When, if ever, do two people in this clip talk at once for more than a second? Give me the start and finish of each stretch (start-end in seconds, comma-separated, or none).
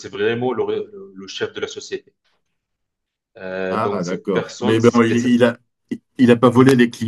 3.7-5.4